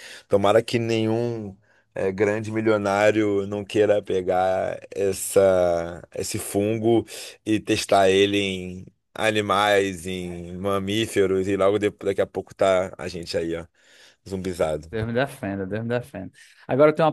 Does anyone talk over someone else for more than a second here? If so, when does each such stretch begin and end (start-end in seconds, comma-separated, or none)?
none